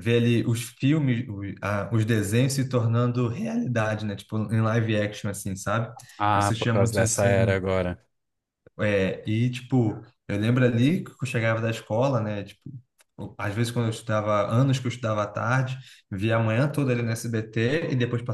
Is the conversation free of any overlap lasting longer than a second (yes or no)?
no